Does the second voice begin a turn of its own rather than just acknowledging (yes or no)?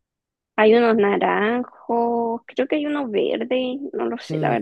yes